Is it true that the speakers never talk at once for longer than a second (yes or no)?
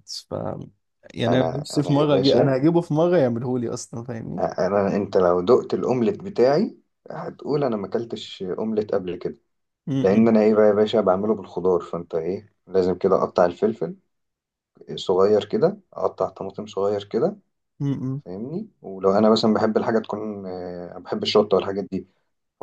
no